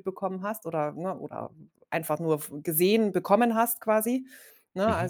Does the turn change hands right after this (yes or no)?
no